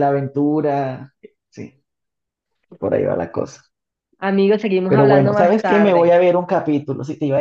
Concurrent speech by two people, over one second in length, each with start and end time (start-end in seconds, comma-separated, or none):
4.9-6.2